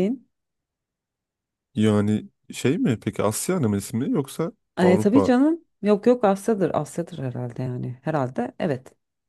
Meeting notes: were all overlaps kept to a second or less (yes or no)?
yes